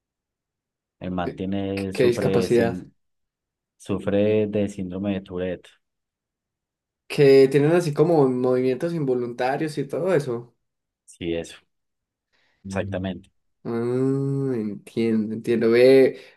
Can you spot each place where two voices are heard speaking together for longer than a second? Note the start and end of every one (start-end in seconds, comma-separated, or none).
1.2-2.9